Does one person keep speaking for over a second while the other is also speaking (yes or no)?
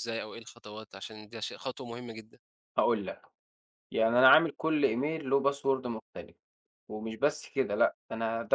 no